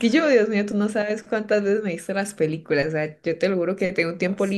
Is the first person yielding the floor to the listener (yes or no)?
no